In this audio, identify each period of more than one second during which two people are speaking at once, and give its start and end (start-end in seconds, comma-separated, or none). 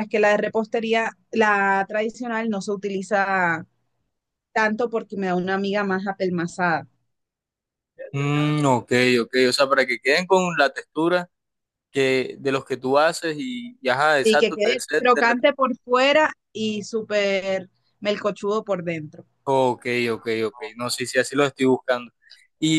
14.2-15.6